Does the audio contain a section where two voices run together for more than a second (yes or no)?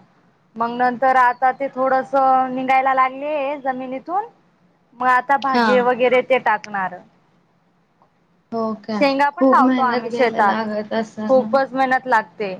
yes